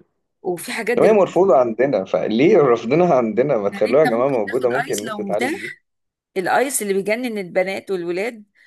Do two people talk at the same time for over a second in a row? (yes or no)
yes